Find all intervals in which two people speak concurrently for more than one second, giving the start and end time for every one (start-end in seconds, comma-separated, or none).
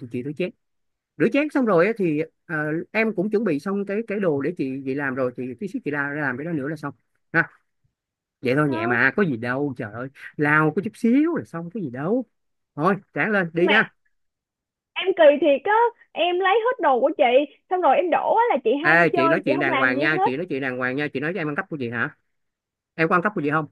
18.8-20.3